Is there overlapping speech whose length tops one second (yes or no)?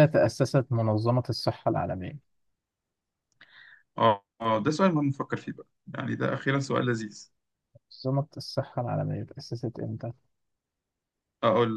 no